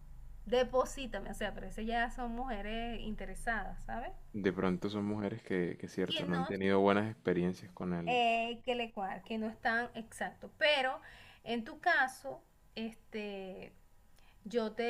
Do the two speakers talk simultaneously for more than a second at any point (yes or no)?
no